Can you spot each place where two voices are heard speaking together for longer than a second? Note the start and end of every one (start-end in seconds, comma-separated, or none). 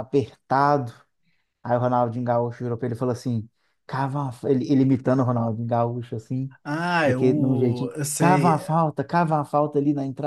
7.0-8.6